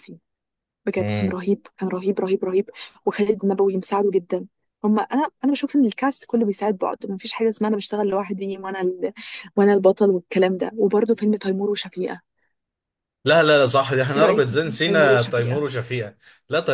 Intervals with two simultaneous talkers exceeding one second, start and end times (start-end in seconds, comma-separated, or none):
14.2-15.7